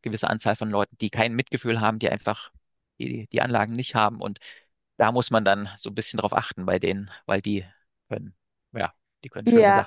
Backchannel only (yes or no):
no